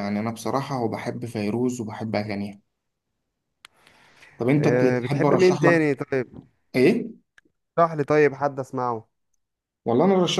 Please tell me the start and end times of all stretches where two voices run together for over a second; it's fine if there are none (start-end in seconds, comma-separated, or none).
4.6-5.8